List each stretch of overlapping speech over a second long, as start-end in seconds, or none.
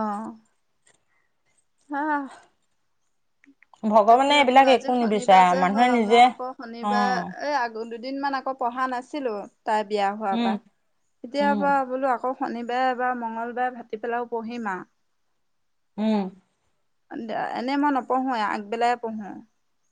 4.1-6.2